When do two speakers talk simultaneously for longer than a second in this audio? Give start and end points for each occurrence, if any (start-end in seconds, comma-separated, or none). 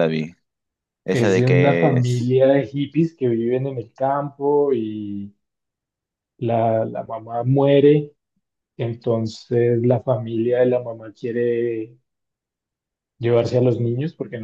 1.1-2.4